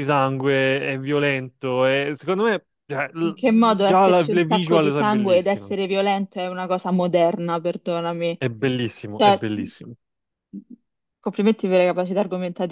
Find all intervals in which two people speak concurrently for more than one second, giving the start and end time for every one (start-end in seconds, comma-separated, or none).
3.2-5.7